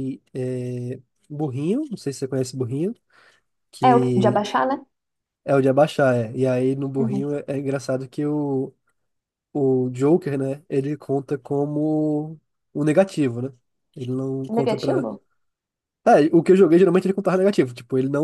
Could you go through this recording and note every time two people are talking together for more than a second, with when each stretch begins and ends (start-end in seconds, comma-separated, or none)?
none